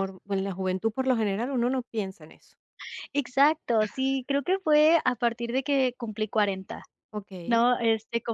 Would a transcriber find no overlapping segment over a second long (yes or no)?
yes